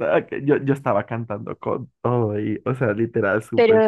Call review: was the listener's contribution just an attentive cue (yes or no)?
no